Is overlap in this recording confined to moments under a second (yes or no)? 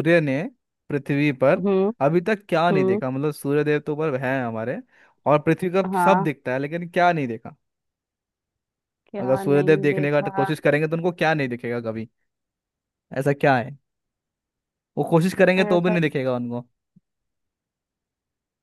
no